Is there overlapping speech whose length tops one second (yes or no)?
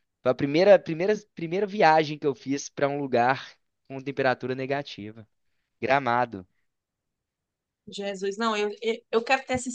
no